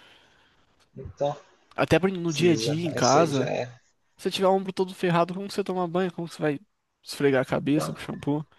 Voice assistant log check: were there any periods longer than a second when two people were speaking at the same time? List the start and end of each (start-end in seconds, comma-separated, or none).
2.2-3.5